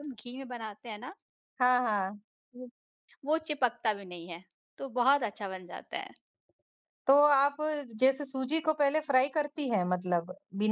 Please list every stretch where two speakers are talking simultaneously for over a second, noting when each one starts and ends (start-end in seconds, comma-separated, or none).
none